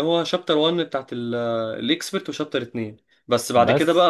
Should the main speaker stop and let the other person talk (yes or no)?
yes